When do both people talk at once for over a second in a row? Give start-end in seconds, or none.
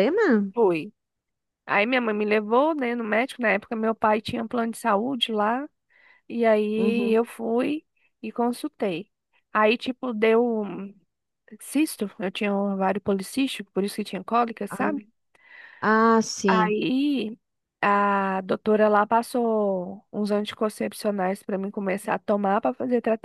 none